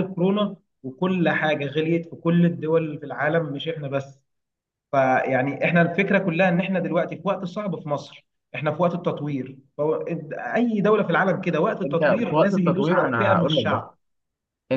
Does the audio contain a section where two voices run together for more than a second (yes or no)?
yes